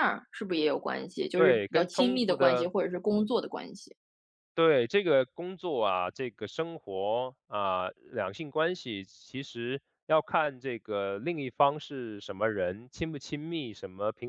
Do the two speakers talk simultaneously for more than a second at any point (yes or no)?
yes